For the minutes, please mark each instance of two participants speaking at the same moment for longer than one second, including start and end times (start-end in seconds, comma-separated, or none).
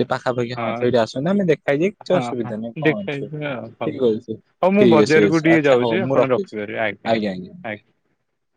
2.1-4.0, 4.8-6.5